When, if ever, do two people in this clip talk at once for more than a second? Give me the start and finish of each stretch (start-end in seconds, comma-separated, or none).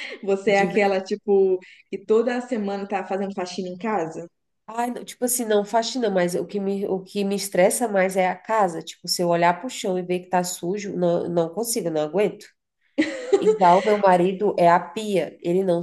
none